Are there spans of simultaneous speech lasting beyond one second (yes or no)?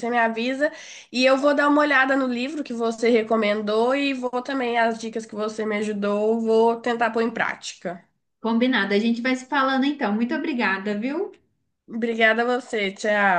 no